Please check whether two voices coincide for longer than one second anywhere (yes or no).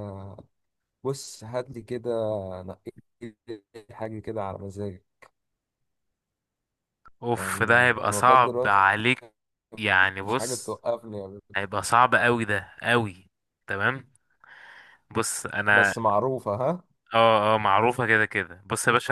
yes